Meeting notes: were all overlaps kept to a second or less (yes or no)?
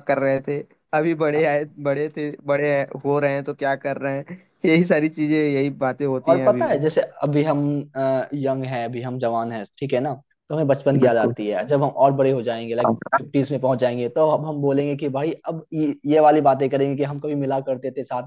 yes